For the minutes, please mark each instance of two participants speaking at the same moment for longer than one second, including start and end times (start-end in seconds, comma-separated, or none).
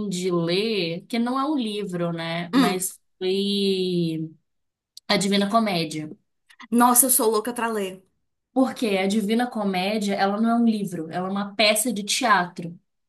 none